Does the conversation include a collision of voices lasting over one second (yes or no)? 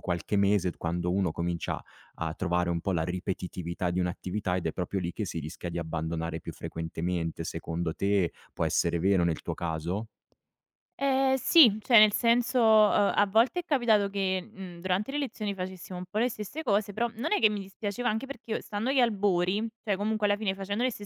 no